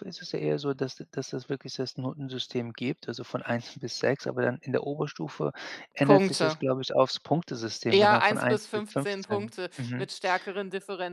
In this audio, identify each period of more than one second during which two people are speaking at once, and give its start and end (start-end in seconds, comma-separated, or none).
7.9-10.1